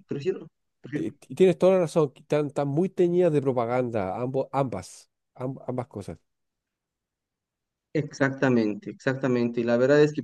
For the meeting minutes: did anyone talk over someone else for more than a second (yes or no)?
no